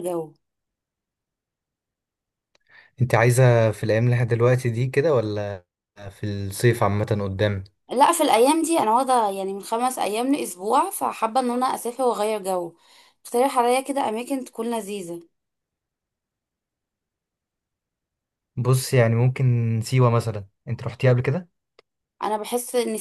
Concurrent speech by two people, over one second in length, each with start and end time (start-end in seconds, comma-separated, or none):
none